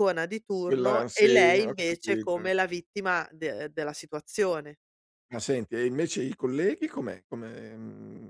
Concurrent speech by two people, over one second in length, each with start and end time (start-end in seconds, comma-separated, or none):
0.7-2.5